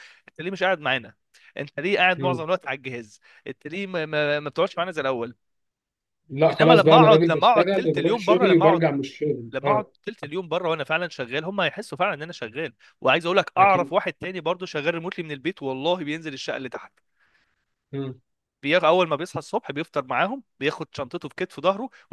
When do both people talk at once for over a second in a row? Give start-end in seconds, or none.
6.6-8.8